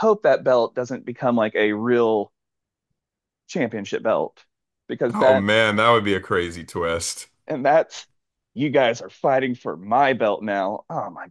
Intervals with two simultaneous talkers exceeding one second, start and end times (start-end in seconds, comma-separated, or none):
none